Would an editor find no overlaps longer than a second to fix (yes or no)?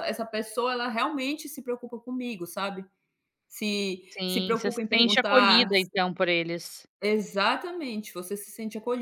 no